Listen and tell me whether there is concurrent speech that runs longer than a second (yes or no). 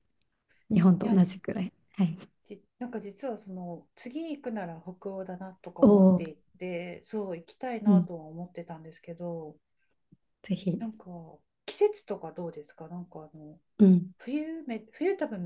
no